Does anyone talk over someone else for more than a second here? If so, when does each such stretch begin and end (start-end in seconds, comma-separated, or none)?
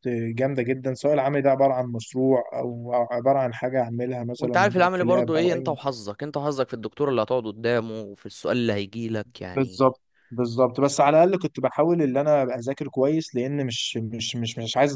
4.4-5.7